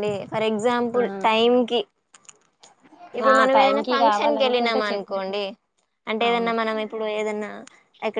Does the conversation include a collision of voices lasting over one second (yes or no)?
yes